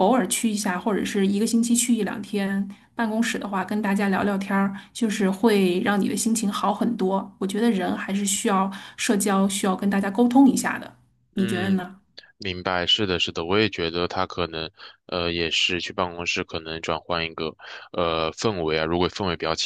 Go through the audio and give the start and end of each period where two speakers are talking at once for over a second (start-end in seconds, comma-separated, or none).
none